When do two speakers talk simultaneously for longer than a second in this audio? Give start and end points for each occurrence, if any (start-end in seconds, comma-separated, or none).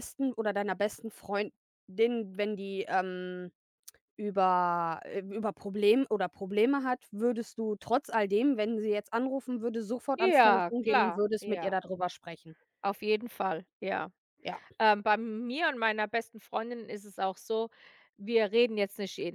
10.1-11.8